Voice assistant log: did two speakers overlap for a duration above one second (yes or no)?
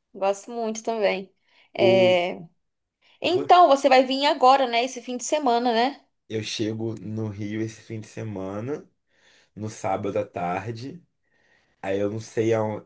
no